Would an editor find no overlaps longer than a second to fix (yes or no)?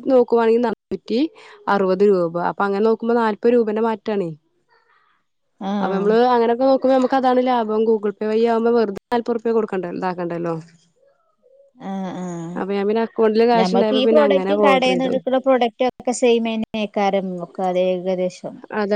no